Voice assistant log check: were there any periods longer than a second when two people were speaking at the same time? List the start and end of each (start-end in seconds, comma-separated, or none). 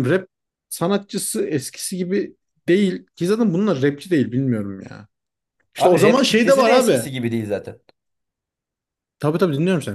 5.8-7.1